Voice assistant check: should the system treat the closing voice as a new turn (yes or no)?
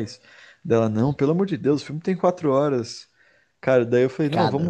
no